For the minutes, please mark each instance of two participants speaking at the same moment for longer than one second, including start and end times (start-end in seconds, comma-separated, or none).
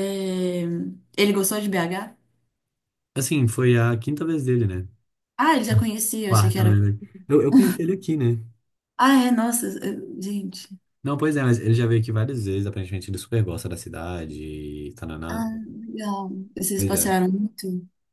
none